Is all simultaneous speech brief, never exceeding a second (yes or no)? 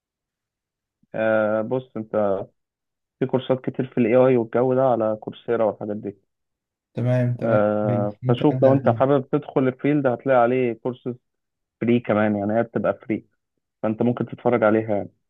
no